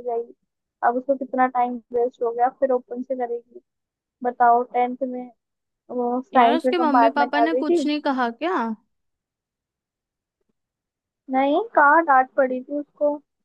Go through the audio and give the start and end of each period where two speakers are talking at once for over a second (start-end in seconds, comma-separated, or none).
6.3-7.8